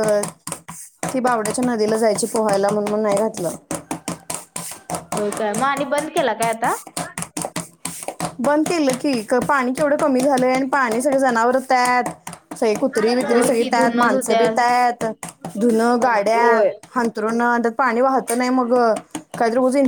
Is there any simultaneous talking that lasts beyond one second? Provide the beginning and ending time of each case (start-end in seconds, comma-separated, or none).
13.0-14.4